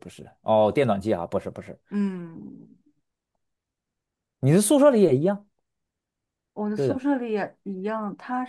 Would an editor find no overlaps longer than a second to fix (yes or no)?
yes